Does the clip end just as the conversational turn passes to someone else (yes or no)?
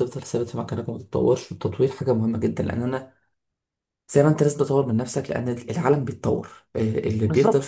yes